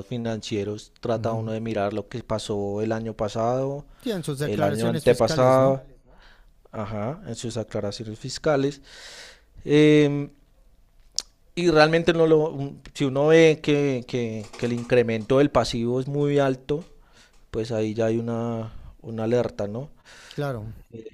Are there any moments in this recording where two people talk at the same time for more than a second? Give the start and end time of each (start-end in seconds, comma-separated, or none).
4.4-5.8